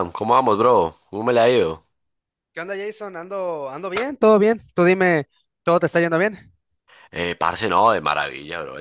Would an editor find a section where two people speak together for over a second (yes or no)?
no